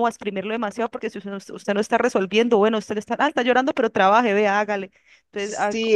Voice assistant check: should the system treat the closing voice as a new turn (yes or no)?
yes